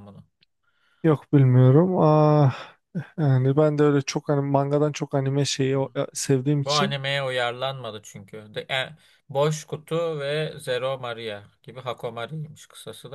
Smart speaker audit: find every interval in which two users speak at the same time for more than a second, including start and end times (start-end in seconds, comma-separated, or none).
none